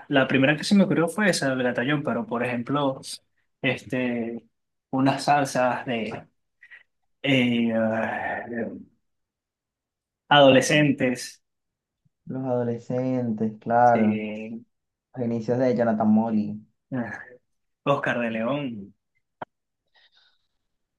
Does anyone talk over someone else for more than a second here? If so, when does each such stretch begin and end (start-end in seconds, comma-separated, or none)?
none